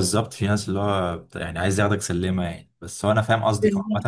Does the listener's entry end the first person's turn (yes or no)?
no